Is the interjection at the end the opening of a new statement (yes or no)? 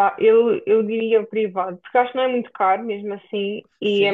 yes